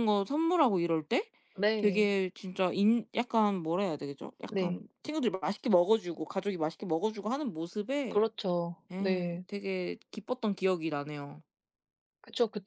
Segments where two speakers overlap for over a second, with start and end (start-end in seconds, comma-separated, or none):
none